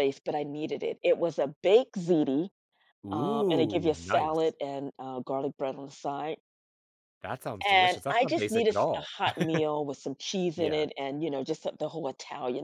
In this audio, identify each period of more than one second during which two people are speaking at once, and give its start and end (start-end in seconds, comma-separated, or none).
3.1-4.5, 7.7-9.1